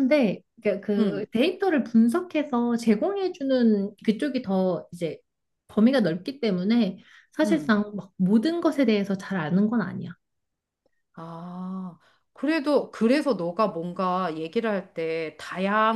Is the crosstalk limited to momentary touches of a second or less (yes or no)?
yes